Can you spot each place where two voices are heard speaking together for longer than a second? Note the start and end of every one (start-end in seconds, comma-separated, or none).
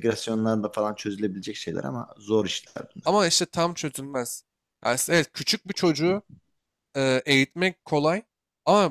none